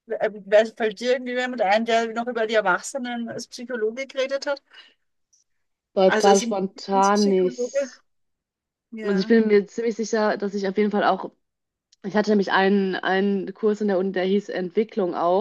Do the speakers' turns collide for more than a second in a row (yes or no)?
yes